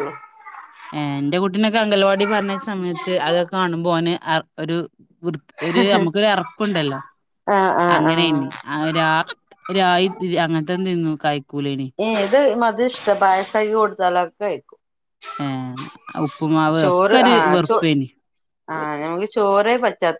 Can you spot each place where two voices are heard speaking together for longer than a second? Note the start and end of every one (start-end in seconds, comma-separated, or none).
none